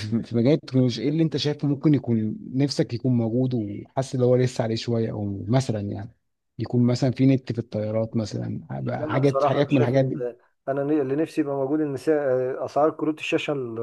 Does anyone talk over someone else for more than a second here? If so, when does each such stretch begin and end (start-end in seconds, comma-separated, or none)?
9.0-10.2